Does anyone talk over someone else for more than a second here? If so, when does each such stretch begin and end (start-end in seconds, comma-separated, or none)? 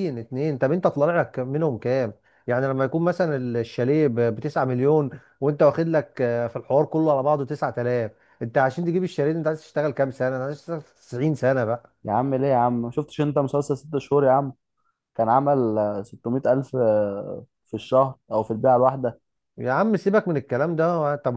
none